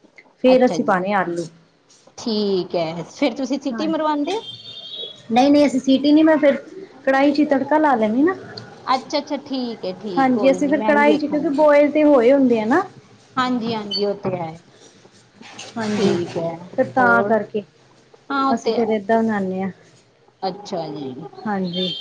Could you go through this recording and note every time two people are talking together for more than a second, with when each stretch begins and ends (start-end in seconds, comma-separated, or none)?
10.2-11.7